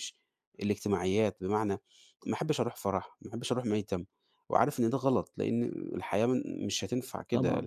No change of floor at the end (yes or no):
yes